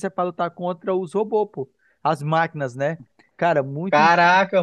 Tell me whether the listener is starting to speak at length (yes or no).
yes